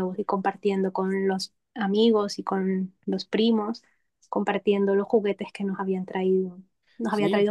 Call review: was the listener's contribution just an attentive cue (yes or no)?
no